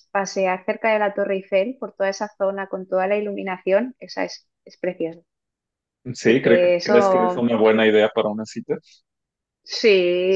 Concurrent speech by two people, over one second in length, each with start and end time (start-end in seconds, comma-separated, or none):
6.2-7.5